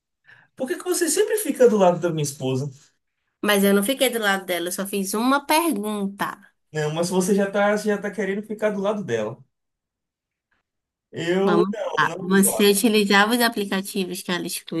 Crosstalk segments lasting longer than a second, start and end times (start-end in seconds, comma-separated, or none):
11.4-12.8